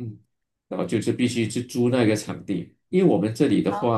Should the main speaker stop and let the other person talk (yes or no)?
no